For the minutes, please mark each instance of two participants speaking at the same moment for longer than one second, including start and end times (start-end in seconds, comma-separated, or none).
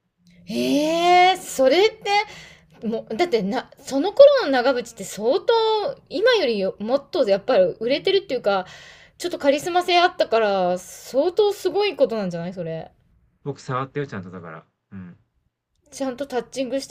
none